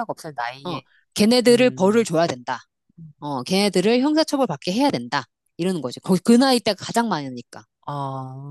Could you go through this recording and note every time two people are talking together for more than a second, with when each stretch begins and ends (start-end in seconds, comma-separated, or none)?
none